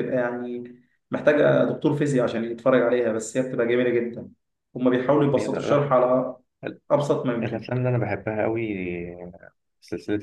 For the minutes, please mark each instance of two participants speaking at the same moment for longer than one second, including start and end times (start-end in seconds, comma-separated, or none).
none